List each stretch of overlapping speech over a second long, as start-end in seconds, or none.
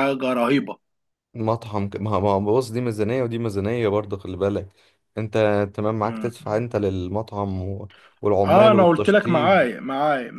8.4-9.7